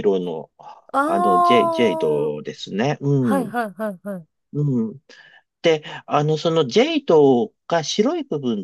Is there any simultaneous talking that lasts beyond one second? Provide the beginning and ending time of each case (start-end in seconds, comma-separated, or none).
0.9-2.3